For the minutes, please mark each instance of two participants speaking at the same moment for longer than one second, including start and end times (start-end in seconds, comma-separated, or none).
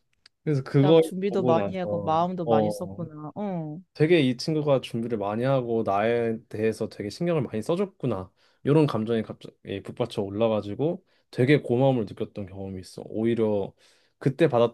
0.7-3.1